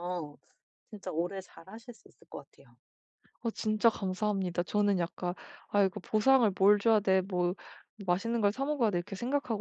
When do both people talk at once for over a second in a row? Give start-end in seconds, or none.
none